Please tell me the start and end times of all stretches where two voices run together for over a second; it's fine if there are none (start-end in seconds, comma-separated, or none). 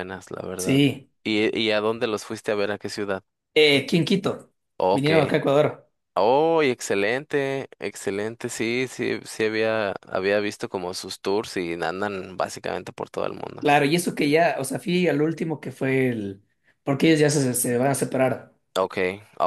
none